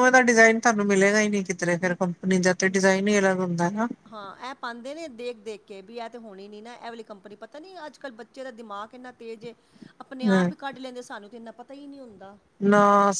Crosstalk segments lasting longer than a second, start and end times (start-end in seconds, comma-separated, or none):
none